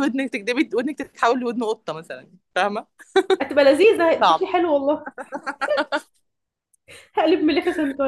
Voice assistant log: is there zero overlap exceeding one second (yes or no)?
yes